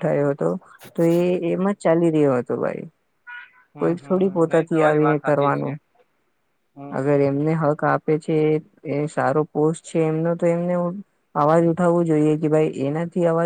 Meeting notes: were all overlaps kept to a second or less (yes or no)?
no